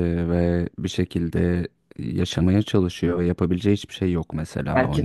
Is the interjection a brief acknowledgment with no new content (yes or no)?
no